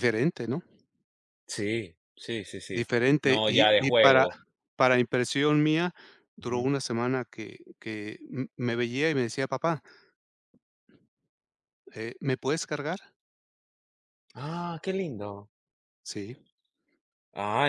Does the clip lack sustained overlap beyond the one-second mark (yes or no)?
no